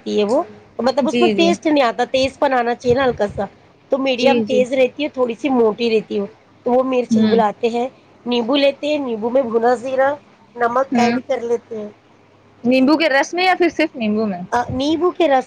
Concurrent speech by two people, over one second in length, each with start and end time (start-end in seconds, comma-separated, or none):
none